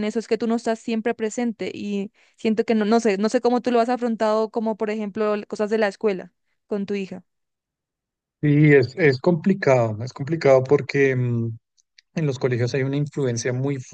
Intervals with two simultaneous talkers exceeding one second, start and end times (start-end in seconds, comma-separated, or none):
none